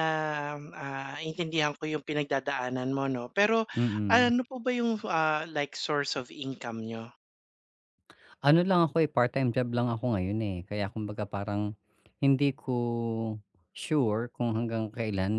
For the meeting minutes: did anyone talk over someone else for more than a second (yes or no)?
no